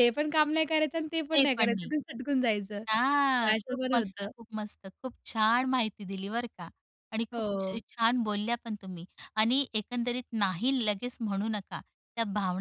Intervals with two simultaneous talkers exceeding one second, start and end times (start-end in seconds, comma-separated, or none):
2.9-4.3